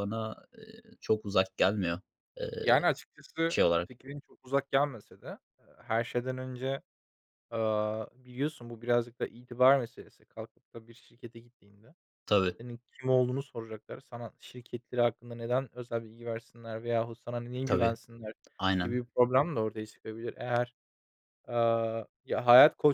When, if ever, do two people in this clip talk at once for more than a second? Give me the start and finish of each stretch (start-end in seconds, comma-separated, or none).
none